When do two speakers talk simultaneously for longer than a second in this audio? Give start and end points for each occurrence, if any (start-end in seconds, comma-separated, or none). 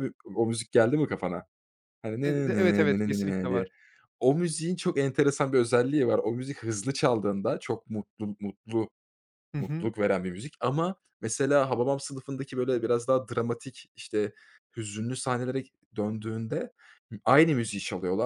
2.2-3.7